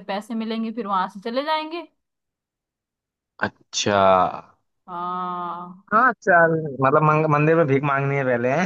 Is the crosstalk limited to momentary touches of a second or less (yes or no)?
yes